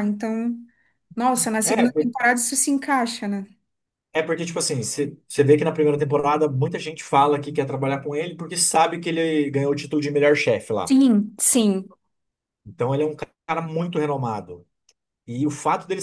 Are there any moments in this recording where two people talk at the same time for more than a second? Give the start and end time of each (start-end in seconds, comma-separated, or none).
none